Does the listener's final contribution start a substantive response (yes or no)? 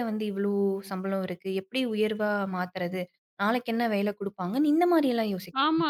yes